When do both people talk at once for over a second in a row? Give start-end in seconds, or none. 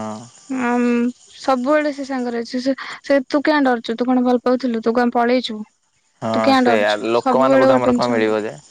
6.3-8.2